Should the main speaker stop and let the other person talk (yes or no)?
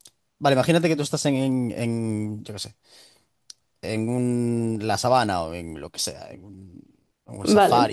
no